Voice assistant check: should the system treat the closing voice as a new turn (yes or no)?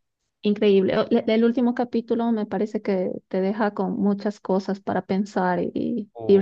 no